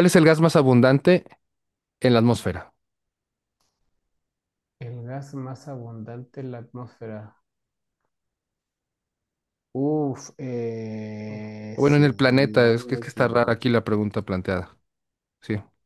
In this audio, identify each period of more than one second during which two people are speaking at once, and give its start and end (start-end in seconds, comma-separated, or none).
11.3-13.6